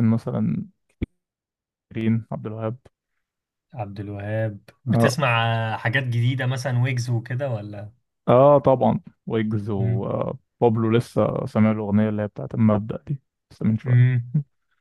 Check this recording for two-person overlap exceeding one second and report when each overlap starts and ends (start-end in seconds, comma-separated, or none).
none